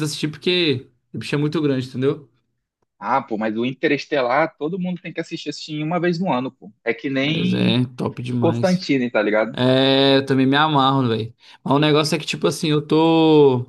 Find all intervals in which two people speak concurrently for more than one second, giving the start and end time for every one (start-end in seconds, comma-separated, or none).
none